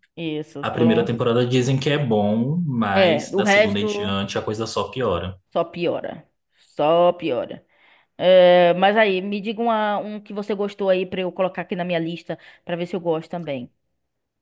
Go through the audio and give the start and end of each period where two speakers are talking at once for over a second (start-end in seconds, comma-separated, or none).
2.9-4.1